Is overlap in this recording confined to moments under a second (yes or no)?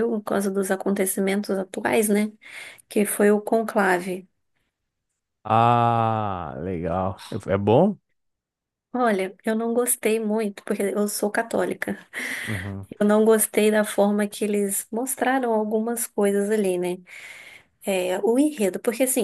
yes